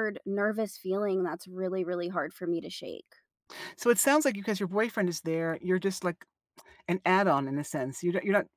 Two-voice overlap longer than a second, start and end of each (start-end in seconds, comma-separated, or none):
none